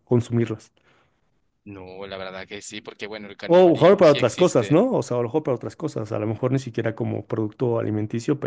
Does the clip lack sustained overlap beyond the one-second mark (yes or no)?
no